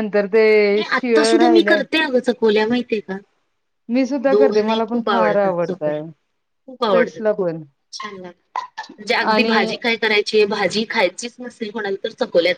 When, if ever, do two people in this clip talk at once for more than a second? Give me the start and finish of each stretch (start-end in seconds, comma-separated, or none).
4.3-6.0